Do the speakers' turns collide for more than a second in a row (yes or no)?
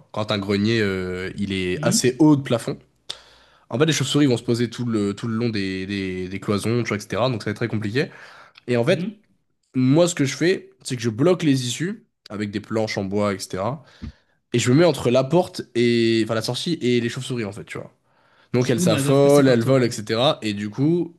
yes